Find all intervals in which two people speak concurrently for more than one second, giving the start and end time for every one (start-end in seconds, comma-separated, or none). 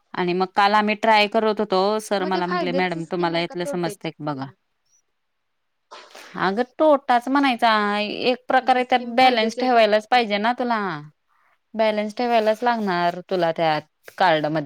2.2-4.5, 8.6-10.3